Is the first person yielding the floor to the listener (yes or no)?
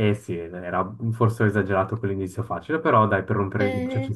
yes